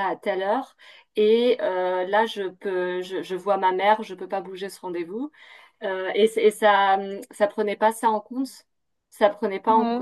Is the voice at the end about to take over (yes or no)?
no